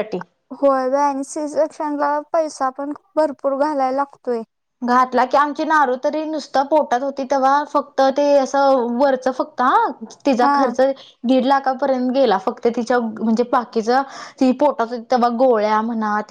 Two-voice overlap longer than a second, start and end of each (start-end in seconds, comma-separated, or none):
none